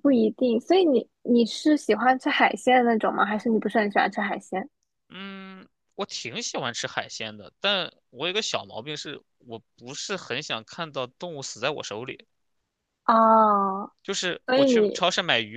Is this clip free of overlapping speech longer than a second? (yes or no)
yes